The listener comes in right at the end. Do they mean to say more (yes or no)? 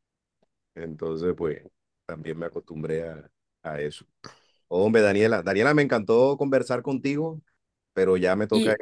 no